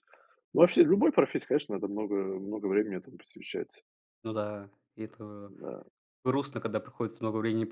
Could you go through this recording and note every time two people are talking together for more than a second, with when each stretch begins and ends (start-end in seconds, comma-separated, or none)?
none